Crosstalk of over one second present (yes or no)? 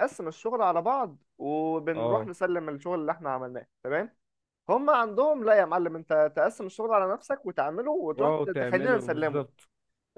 yes